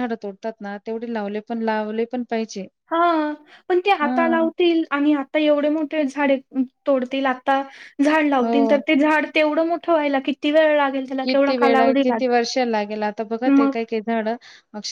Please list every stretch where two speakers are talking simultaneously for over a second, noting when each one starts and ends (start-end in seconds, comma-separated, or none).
none